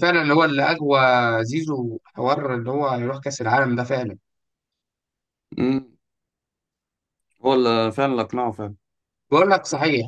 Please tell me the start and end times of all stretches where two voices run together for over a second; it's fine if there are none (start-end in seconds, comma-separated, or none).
none